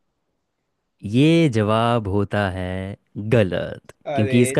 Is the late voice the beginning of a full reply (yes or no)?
no